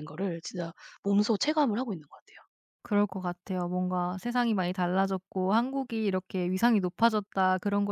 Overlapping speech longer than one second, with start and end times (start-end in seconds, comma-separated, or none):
none